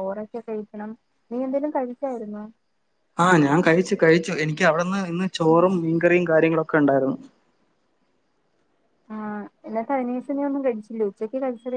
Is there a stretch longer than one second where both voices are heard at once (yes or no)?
no